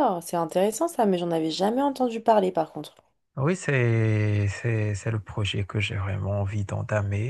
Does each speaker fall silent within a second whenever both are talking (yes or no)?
yes